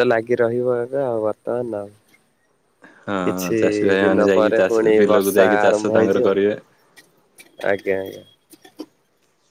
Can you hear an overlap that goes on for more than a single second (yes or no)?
yes